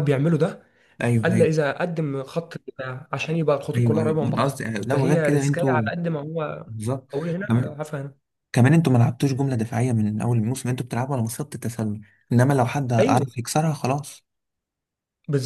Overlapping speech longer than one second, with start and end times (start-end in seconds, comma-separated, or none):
3.8-5.8